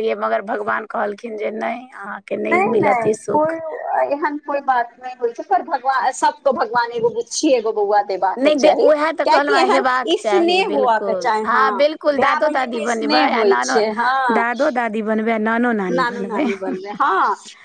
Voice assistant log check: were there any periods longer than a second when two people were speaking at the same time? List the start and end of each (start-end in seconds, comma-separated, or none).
8.4-11.3